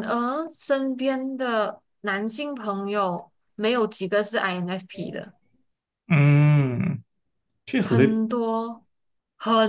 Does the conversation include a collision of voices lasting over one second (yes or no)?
no